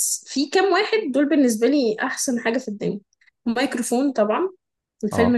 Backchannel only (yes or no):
yes